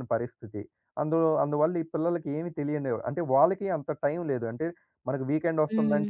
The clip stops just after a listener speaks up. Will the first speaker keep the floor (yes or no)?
yes